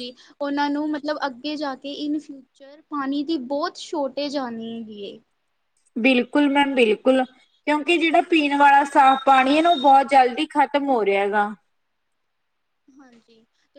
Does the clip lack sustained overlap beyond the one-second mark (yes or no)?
yes